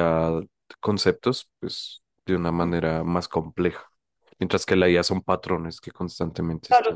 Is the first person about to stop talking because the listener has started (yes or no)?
yes